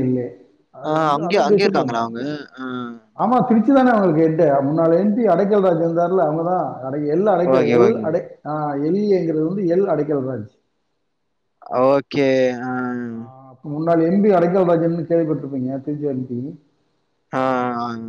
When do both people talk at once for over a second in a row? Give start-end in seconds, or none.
none